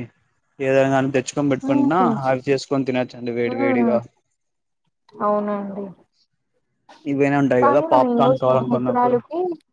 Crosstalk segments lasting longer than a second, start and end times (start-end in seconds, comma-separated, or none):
7.6-9.2